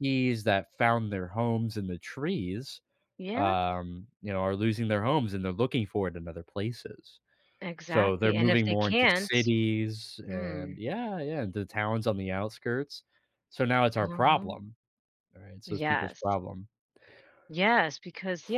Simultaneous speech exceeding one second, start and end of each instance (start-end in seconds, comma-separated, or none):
7.9-9.5